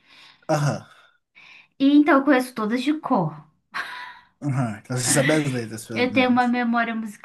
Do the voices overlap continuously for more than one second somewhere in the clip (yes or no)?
no